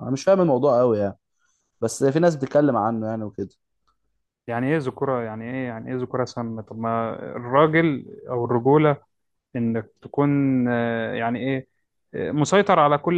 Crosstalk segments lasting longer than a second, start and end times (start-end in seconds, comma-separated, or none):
none